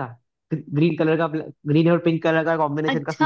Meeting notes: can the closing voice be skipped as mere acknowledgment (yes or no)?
no